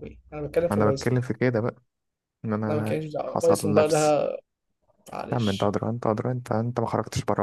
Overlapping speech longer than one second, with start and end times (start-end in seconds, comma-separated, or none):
2.7-4.2